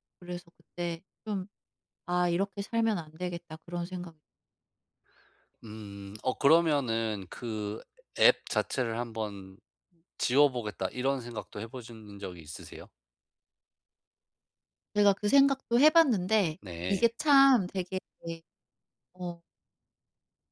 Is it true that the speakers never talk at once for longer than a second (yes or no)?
yes